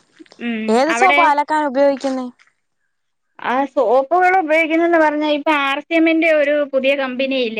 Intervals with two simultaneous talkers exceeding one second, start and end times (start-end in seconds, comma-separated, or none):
none